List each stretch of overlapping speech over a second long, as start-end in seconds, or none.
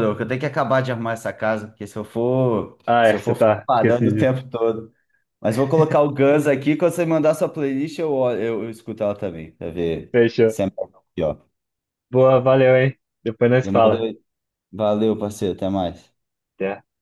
2.9-4.4